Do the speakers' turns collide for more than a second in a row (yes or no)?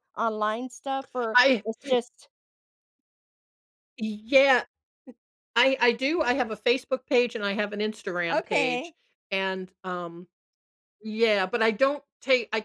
no